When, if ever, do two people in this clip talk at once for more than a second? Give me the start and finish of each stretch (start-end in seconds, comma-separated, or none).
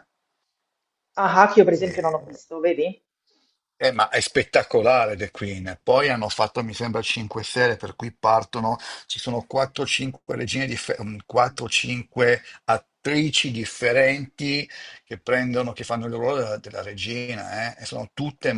none